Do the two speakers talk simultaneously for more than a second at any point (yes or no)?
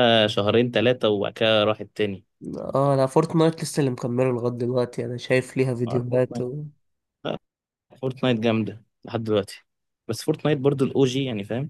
no